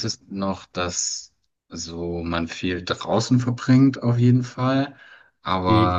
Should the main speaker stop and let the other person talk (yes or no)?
no